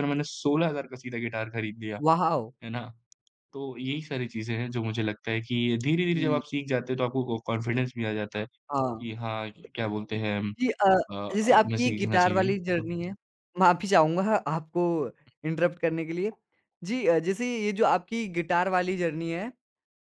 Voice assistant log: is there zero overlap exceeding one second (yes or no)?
no